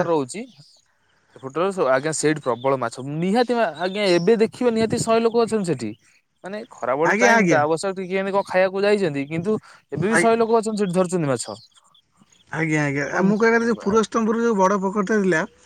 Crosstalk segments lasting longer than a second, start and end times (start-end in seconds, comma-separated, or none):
none